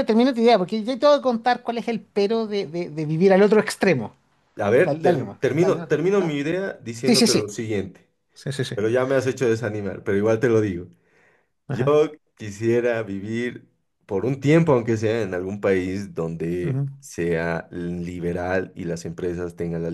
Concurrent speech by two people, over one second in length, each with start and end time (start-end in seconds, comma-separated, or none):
4.8-6.4